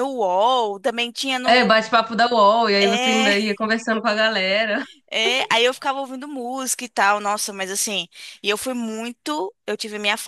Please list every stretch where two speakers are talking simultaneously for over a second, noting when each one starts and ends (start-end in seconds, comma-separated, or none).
none